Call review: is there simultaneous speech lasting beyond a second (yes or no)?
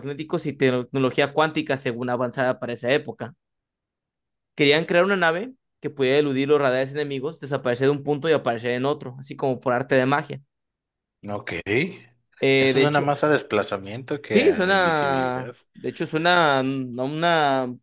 yes